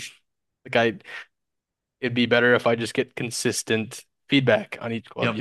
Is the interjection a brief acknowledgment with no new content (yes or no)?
no